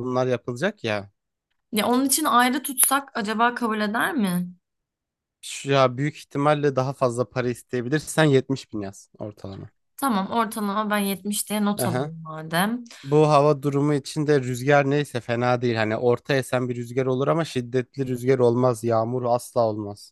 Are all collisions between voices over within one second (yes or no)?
yes